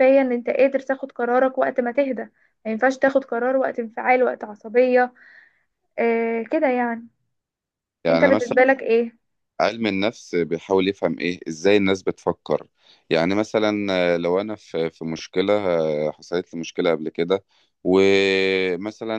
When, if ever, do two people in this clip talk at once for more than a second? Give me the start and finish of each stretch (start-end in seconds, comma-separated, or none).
none